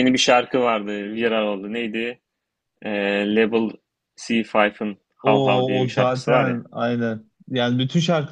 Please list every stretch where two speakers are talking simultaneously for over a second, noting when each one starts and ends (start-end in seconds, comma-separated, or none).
5.2-6.6